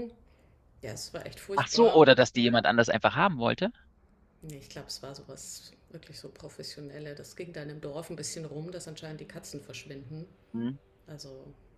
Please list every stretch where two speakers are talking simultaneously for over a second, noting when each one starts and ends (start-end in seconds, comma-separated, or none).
none